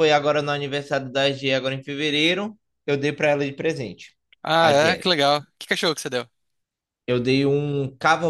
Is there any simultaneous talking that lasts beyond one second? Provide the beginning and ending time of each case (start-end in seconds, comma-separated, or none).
none